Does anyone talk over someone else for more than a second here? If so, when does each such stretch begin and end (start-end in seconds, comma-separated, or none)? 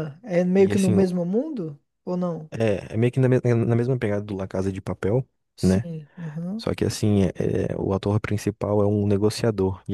none